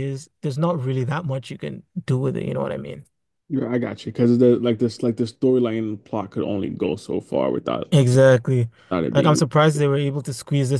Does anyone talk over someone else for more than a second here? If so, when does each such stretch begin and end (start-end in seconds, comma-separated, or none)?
none